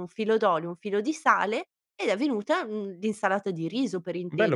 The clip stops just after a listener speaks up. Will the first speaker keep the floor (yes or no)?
no